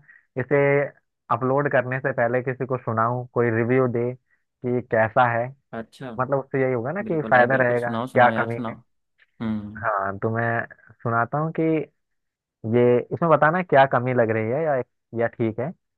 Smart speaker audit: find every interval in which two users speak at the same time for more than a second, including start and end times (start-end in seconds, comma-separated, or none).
7.0-8.7